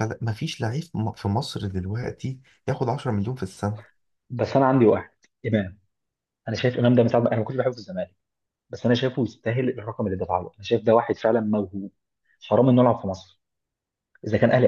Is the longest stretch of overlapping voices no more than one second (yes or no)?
yes